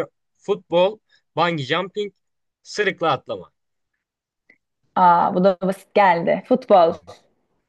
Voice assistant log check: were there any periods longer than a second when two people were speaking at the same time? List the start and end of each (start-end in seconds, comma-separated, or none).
none